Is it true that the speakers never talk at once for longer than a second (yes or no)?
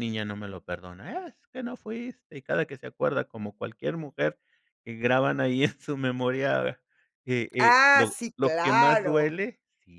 no